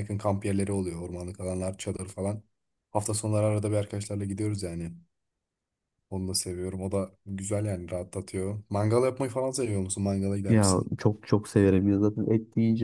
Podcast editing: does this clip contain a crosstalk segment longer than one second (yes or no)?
no